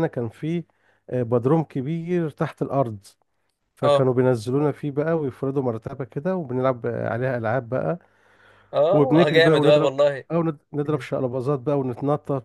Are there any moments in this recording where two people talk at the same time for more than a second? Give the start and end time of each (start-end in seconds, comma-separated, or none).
8.9-10.2